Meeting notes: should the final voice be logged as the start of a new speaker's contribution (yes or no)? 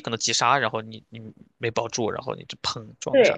yes